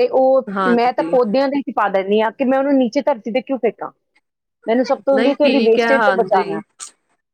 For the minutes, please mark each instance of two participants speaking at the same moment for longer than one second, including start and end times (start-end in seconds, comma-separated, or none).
5.2-6.6